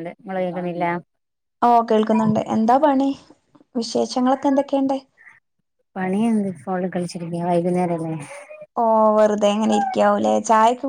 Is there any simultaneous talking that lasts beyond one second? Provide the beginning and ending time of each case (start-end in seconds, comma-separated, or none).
none